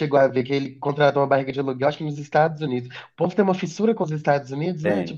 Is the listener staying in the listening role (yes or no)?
no